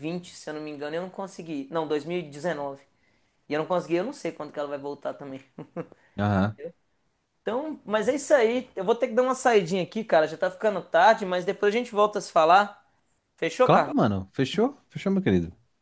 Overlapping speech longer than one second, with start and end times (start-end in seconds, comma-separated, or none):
none